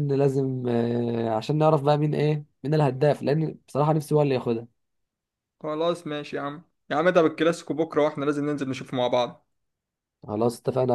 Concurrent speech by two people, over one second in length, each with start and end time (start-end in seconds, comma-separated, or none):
none